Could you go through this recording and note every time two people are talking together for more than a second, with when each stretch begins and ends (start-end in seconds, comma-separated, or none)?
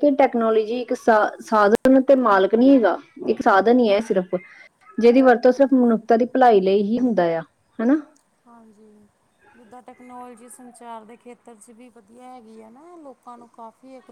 none